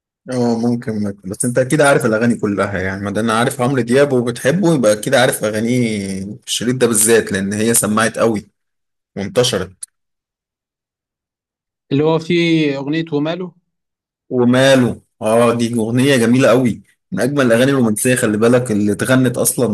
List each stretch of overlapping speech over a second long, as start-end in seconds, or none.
none